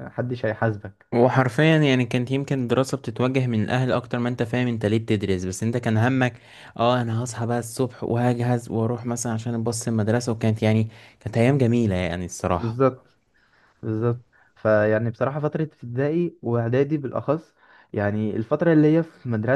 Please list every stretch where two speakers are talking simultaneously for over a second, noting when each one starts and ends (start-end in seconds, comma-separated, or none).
none